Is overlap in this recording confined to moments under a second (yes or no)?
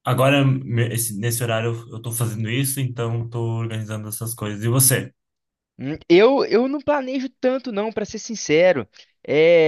yes